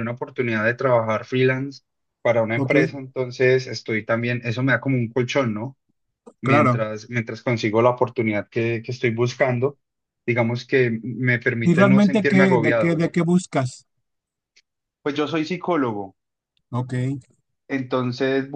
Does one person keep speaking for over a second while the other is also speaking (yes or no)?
yes